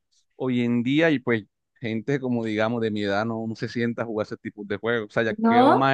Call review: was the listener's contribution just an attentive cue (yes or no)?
yes